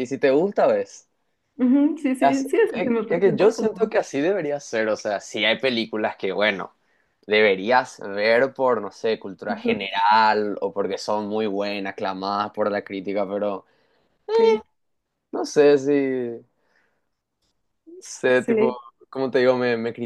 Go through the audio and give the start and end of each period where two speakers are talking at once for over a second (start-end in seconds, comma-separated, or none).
2.2-3.9